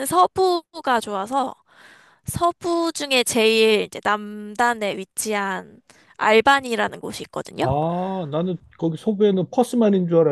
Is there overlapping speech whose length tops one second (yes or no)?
no